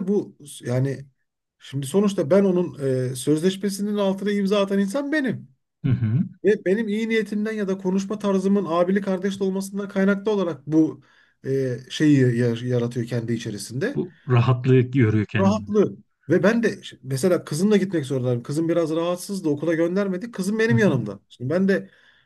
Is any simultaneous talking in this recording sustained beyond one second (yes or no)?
no